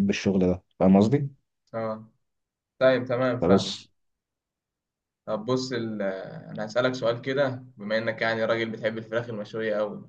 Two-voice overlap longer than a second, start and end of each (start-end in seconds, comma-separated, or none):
none